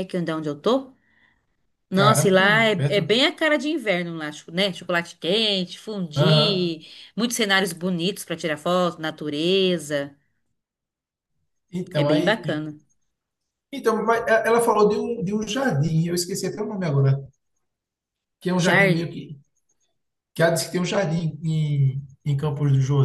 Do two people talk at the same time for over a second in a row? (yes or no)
yes